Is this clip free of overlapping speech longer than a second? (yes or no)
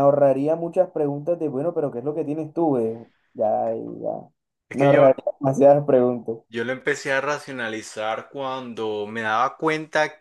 yes